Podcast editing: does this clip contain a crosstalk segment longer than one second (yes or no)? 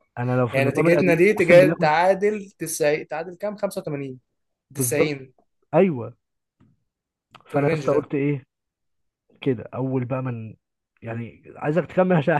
yes